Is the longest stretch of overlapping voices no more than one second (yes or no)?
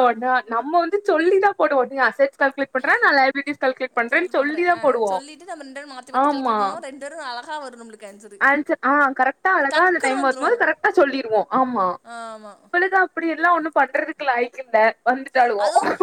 yes